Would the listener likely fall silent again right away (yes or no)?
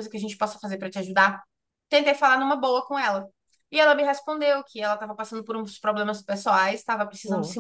yes